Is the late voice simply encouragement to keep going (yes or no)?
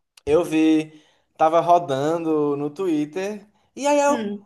yes